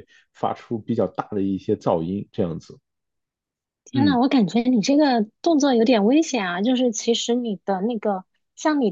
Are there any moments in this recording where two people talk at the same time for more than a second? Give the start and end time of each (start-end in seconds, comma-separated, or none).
none